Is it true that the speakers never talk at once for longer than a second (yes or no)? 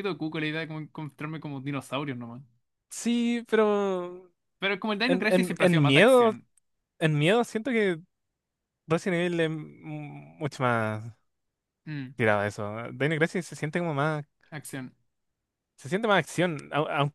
no